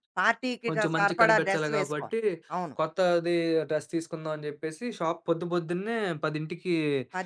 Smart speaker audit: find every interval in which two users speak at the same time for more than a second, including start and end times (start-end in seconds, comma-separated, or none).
0.7-2.2